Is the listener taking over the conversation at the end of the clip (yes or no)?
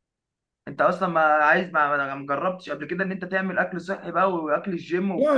yes